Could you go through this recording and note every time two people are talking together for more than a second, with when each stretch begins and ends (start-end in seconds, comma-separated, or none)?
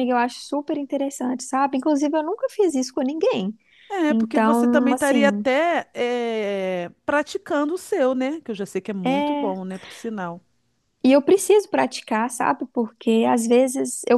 4.1-5.4